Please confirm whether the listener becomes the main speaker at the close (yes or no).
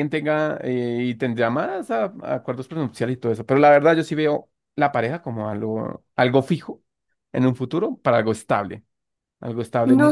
yes